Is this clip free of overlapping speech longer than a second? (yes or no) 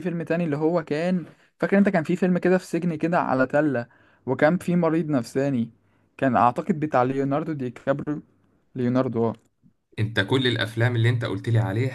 yes